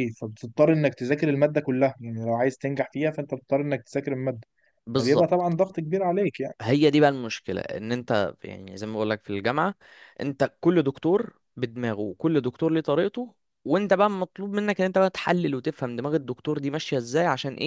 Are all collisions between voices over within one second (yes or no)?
yes